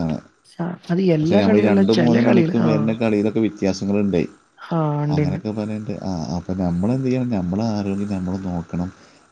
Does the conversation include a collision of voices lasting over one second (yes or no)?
yes